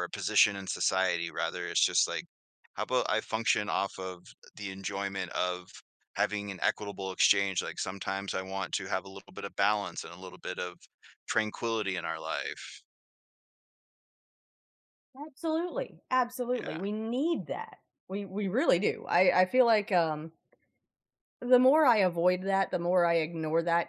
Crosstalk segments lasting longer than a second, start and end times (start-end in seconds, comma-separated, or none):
none